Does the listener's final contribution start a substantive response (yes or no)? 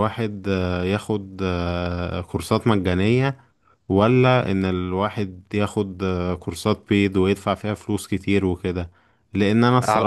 no